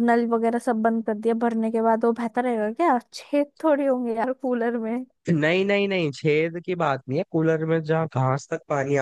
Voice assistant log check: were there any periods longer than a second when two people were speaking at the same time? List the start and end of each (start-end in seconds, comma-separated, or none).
none